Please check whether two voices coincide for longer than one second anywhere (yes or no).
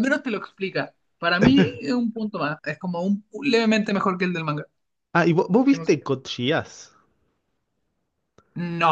no